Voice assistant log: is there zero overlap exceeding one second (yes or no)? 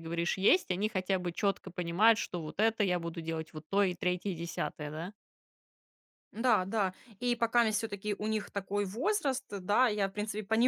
yes